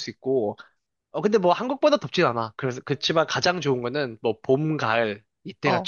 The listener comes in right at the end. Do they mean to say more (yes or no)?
yes